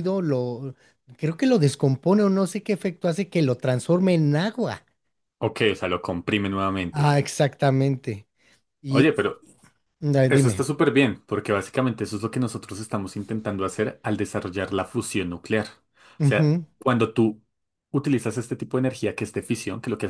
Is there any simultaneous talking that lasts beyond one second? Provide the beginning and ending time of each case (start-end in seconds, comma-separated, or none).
none